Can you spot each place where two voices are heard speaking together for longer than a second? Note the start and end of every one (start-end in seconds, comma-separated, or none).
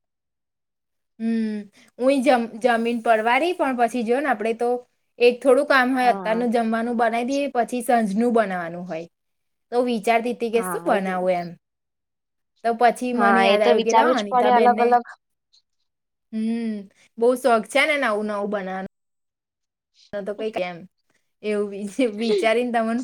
13.2-14.9